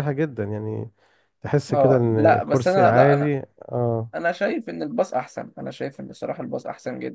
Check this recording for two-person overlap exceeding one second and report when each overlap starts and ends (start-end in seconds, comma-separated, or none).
1.7-3.3